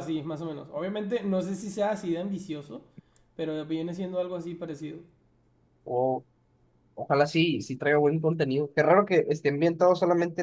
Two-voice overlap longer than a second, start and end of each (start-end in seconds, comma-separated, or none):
none